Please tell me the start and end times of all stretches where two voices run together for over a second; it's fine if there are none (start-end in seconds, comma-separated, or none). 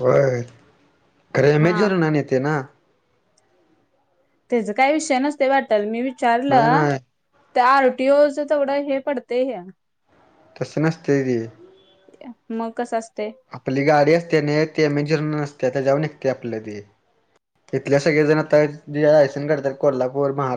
none